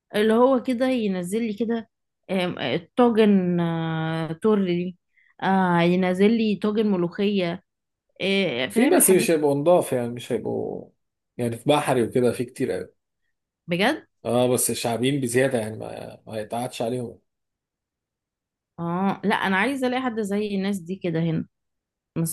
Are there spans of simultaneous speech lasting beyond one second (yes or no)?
no